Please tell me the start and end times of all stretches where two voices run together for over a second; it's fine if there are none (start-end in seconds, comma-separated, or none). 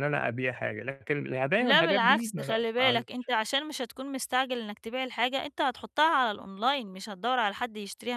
1.6-3.0